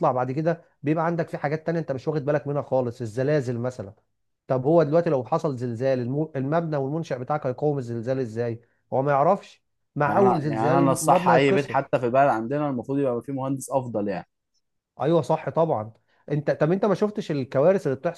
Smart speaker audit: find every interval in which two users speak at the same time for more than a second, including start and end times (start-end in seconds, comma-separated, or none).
10.1-11.9